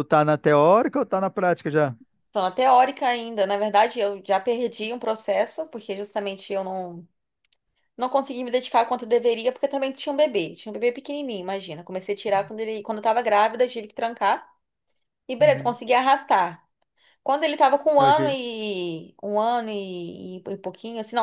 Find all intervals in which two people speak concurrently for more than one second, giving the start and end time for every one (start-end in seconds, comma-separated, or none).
none